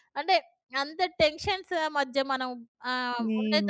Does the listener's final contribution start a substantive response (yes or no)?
no